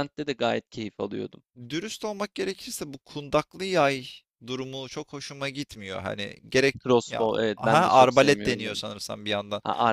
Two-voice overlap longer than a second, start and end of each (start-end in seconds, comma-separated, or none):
6.8-8.8